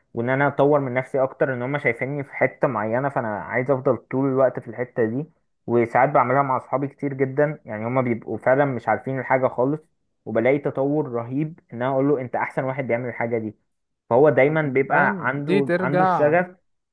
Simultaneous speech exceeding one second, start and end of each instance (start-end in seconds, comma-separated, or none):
14.5-16.3